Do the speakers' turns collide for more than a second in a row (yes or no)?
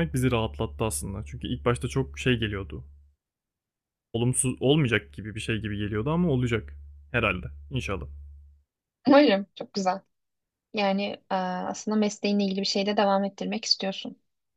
no